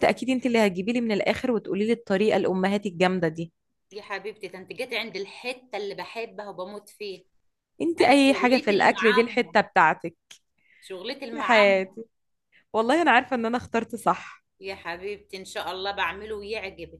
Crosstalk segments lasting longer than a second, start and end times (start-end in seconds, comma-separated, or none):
8.1-9.6